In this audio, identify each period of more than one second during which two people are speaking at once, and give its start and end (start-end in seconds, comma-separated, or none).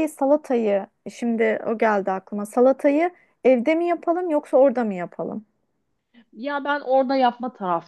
none